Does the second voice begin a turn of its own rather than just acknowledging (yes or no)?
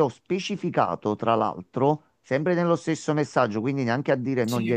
no